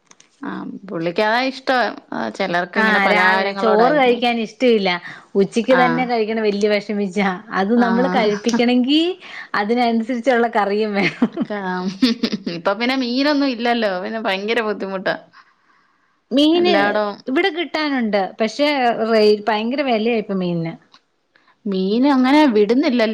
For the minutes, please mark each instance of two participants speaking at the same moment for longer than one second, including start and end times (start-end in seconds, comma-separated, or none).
2.8-4.2